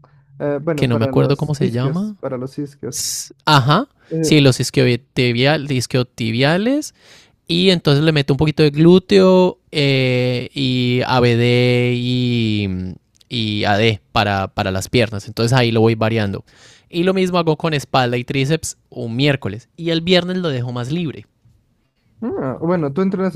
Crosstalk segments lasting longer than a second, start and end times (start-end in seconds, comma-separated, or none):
0.7-2.2